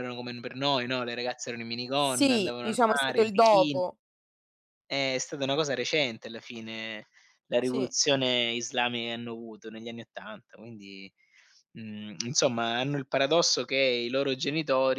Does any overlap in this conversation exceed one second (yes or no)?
yes